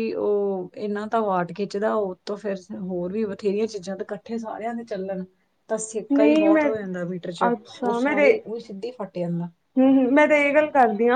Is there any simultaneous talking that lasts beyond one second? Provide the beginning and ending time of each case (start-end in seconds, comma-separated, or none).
none